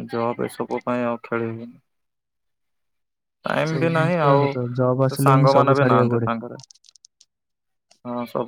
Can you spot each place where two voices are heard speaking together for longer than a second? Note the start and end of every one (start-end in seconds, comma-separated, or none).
3.7-6.3